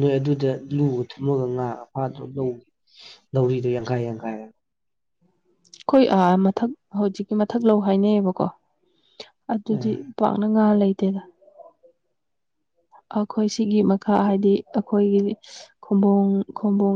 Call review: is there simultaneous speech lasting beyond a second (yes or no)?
no